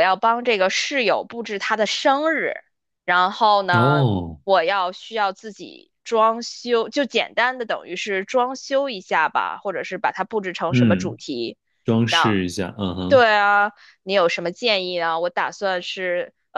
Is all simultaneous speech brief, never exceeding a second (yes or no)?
yes